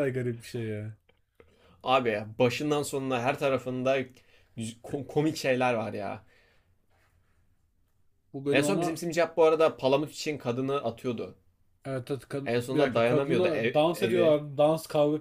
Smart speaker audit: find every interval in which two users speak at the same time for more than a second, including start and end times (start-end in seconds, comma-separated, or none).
12.4-14.4